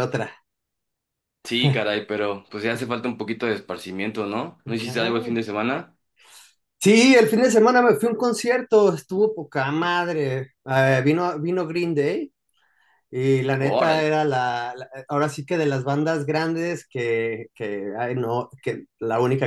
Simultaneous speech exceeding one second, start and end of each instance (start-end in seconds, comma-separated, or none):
none